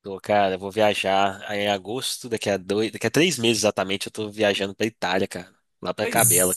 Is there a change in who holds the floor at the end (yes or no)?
yes